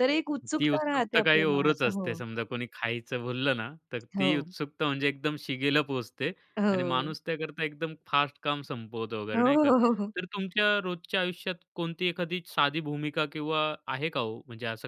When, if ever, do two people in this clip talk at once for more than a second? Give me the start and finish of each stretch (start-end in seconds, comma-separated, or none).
0.6-2.2